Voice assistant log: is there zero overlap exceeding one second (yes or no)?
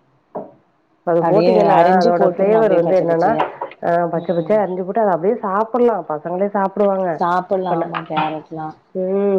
no